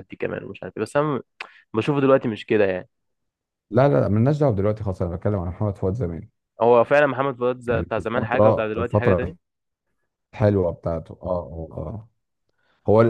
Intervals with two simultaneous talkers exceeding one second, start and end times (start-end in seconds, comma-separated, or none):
7.7-9.3